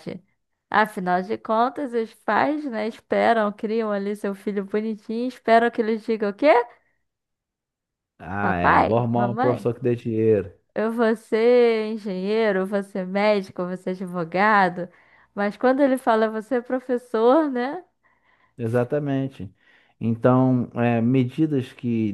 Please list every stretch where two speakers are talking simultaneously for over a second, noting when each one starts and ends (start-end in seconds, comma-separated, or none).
8.4-9.7